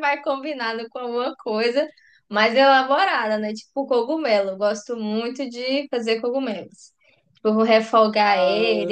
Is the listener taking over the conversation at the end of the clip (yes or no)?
no